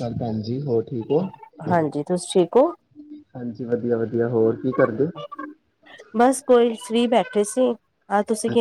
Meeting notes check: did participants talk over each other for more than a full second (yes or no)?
no